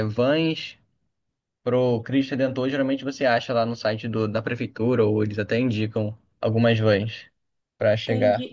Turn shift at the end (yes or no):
yes